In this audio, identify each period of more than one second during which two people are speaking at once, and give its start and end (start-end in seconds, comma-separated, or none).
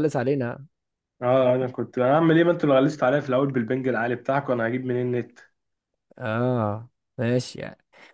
none